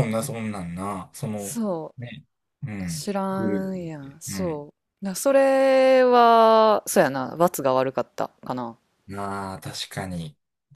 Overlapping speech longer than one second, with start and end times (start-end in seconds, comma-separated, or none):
2.9-4.6